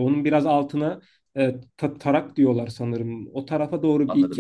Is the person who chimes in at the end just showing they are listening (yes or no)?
yes